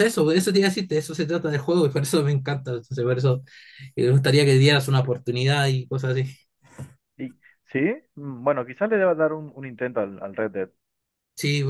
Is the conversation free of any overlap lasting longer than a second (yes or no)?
yes